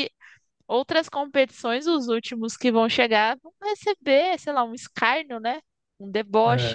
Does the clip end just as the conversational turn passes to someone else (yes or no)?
no